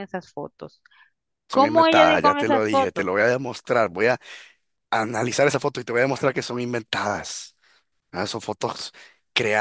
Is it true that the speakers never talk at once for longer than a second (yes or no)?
no